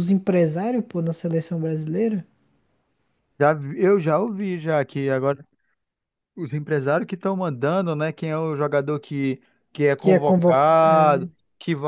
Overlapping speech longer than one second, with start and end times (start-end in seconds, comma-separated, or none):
9.9-11.3